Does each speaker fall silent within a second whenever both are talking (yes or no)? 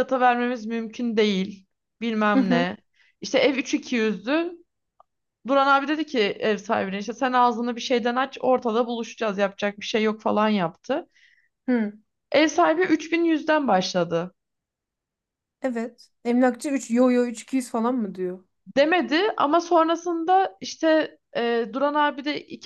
yes